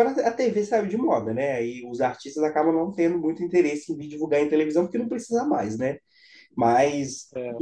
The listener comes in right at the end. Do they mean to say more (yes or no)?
no